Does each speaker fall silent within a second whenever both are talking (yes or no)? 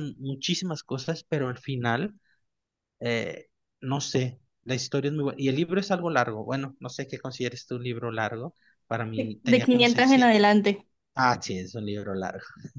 no